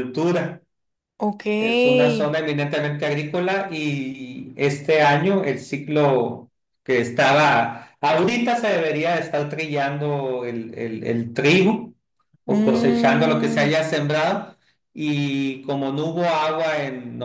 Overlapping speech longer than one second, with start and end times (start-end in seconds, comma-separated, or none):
12.5-13.7